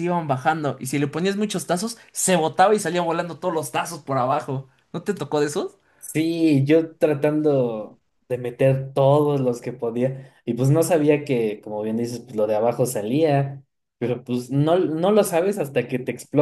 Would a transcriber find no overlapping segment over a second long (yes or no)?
yes